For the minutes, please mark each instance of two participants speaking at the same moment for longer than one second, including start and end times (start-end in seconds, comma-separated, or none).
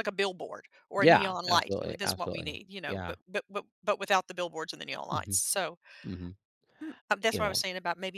0.9-3.1